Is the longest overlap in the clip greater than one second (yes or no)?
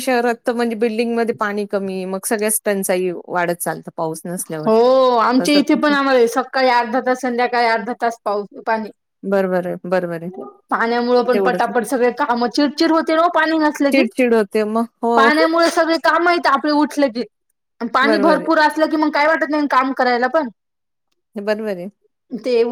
no